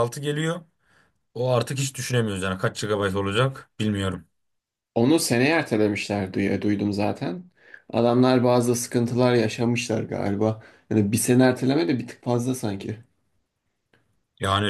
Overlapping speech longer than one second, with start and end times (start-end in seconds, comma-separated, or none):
none